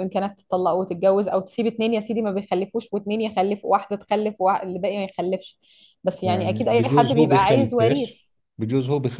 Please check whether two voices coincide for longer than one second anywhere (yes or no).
yes